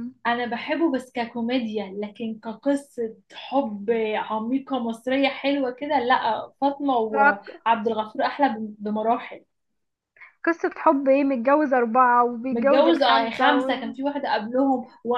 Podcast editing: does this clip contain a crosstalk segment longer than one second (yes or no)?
yes